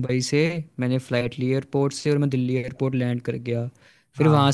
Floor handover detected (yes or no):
no